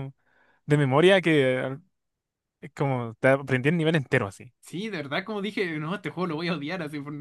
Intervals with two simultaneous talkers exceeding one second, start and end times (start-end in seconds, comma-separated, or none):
none